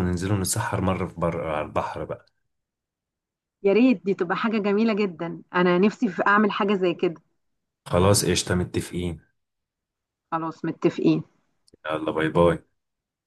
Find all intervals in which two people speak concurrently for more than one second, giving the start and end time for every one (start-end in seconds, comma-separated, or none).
none